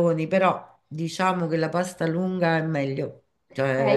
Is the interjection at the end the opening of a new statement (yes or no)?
yes